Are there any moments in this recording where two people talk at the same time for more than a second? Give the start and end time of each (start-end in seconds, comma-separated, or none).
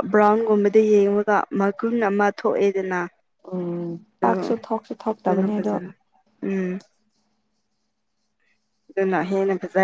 none